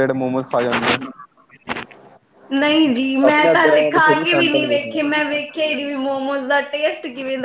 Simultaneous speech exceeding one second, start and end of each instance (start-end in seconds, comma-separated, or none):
3.3-5.0